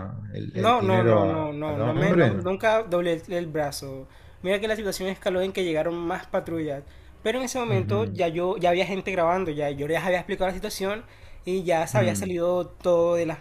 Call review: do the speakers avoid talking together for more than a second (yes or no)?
no